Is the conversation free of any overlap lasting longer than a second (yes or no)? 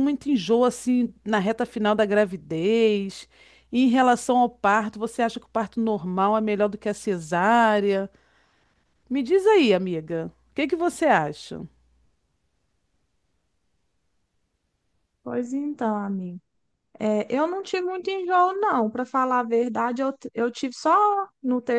yes